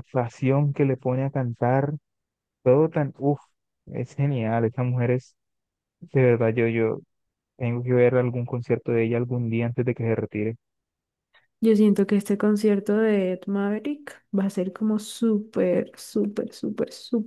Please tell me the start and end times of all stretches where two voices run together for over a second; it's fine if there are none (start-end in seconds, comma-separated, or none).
none